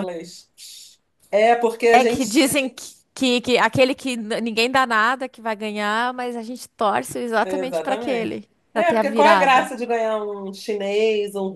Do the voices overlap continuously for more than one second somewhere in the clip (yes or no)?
yes